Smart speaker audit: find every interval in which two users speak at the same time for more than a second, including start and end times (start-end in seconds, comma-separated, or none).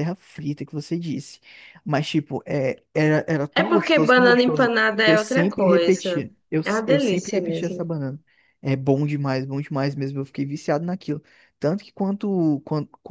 3.5-7.9